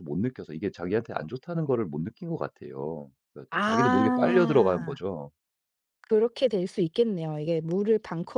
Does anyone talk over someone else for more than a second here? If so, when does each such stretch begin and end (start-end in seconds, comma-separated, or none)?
3.5-5.0